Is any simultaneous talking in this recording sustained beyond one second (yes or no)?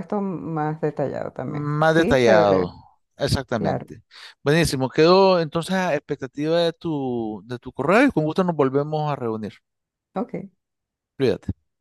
yes